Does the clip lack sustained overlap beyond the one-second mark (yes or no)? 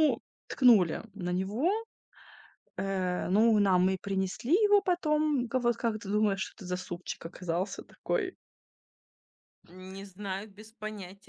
yes